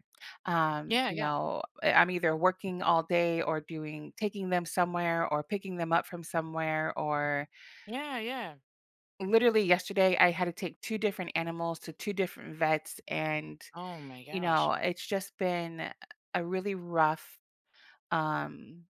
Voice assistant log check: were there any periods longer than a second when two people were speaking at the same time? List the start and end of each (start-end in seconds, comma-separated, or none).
none